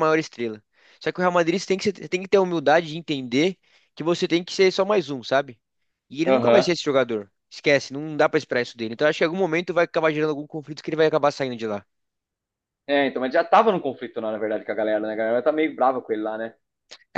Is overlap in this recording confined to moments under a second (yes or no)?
yes